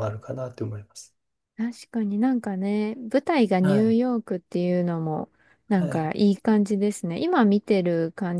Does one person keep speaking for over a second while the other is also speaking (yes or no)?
no